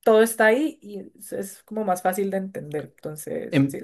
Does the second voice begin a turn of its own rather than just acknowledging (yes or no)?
yes